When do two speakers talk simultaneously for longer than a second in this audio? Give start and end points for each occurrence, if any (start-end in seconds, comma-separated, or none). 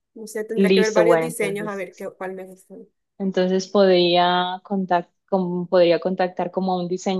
0.5-1.9